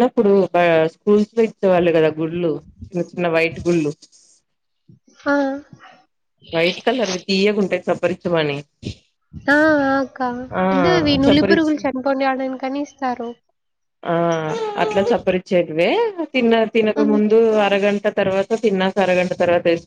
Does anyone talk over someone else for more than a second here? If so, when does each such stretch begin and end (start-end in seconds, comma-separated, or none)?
none